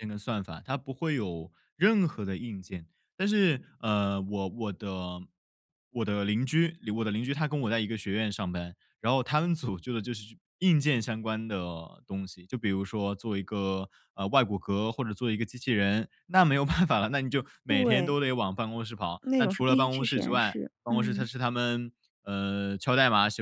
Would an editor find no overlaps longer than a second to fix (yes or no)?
no